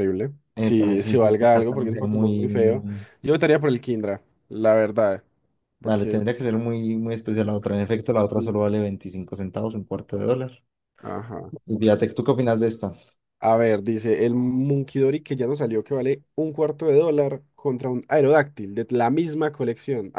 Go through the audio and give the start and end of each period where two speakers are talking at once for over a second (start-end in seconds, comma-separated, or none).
0.6-2.8